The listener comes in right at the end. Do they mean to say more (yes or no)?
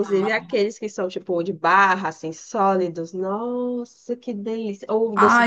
yes